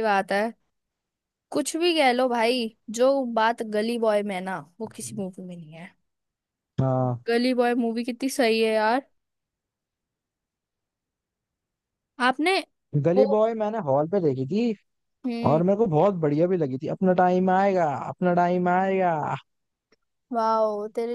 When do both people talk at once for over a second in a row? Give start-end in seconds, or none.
none